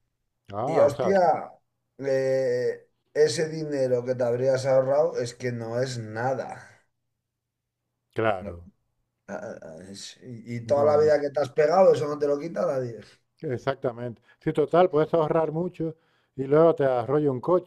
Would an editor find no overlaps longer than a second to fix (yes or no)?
yes